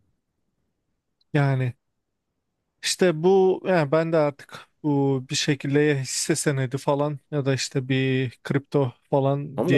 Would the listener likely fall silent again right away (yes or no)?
no